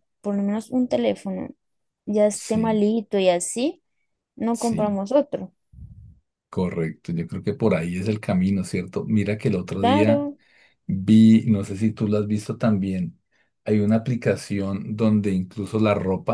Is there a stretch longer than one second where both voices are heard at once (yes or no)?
no